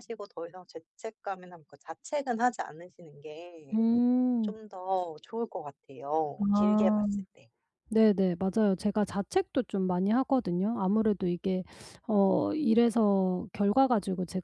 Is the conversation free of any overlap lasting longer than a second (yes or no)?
yes